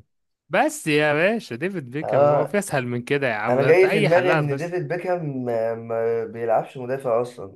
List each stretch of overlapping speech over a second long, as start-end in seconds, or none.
3.5-4.7